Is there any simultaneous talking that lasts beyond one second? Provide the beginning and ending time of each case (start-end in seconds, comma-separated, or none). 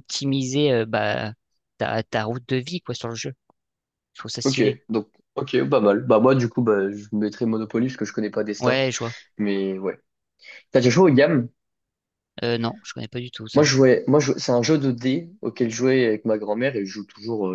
none